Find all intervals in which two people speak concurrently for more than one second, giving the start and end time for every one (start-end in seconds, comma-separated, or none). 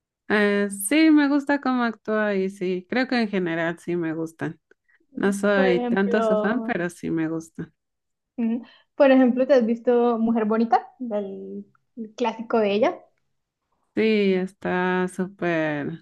5.5-6.8